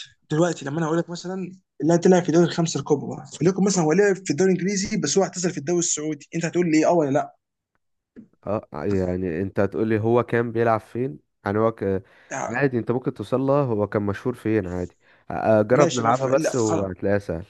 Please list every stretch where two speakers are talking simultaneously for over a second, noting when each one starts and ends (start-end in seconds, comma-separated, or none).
15.7-16.9